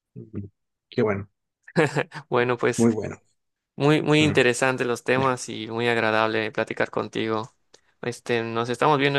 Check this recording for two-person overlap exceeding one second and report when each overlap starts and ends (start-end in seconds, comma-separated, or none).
none